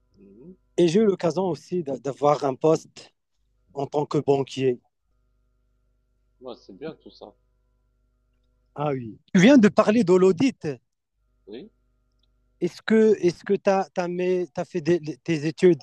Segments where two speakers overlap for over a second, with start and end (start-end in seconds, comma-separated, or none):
none